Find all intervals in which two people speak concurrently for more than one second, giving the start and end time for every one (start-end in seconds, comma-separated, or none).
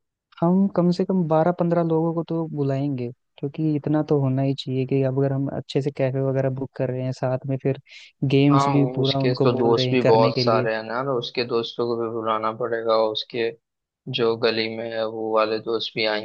8.5-10.7